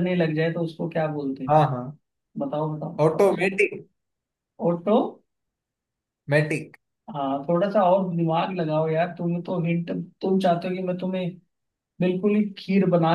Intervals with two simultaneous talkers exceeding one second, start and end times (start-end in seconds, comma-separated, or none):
none